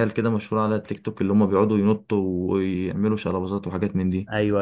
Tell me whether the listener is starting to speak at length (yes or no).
yes